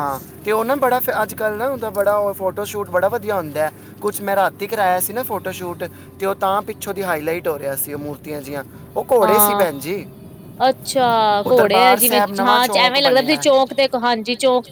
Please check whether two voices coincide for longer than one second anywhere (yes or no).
yes